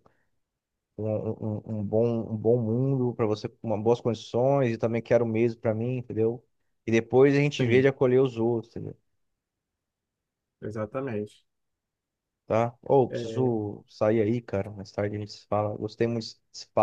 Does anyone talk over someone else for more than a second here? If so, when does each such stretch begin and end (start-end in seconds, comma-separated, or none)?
none